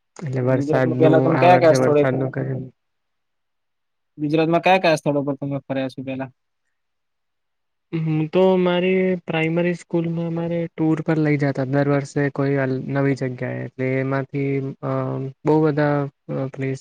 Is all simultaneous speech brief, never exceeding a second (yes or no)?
no